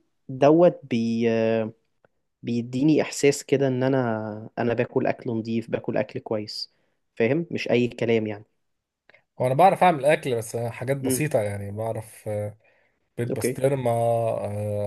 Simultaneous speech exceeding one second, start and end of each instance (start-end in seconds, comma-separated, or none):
none